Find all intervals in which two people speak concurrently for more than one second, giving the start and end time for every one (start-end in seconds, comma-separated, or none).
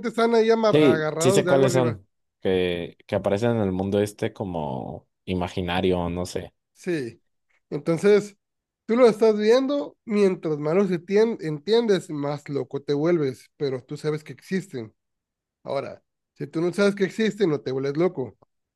0.7-2.0